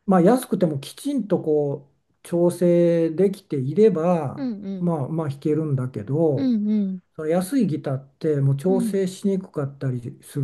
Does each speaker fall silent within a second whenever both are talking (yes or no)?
yes